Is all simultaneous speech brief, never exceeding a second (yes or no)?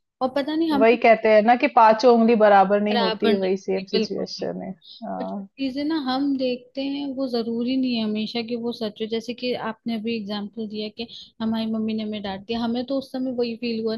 no